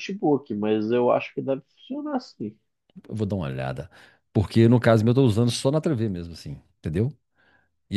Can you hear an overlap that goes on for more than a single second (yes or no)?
no